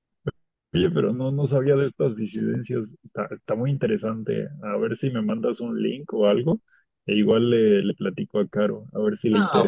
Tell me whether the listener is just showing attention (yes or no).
no